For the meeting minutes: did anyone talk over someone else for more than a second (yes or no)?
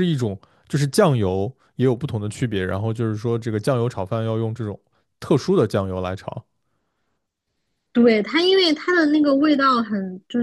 no